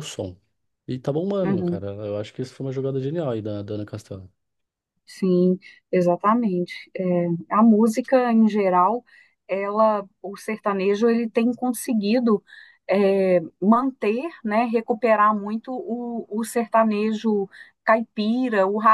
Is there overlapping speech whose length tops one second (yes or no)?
no